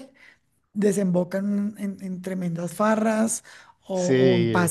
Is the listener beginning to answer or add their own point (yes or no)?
no